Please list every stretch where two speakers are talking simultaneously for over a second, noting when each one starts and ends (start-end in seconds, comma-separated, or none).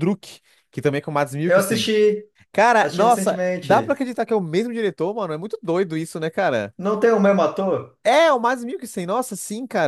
2.8-4.0